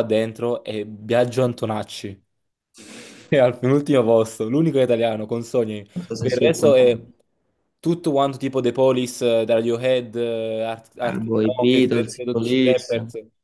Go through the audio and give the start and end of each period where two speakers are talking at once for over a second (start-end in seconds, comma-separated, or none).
11.2-12.9